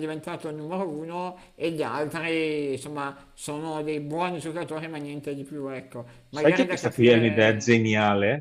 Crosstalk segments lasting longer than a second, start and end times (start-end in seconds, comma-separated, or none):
6.3-7.8